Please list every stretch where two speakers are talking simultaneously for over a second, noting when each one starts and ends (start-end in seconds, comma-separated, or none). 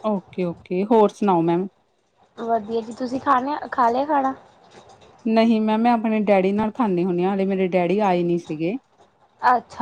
none